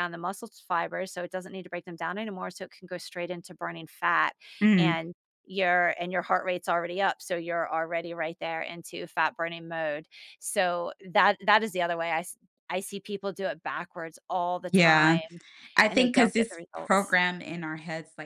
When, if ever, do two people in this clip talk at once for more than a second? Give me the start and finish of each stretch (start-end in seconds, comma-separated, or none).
15.9-17.2